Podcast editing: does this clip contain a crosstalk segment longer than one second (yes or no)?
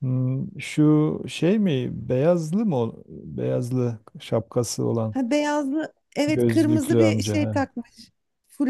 yes